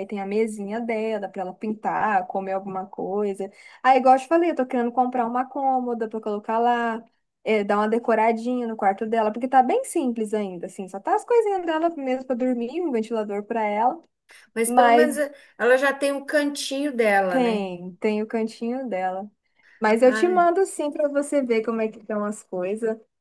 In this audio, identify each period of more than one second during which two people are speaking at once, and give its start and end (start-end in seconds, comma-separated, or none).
none